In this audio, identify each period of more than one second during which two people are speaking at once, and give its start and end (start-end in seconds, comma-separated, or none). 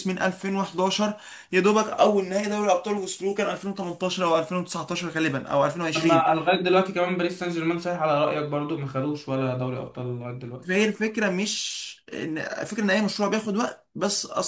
none